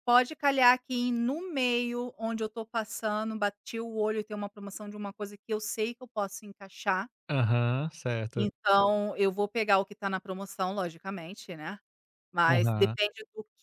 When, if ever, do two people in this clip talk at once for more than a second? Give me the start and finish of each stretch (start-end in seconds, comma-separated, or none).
none